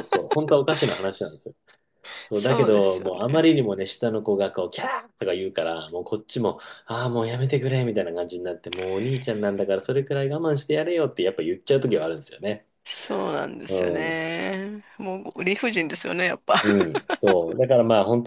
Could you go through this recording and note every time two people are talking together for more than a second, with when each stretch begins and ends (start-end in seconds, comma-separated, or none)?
2.3-3.6